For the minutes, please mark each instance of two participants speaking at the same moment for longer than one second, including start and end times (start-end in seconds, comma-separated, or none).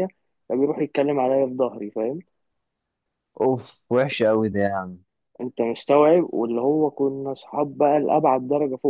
none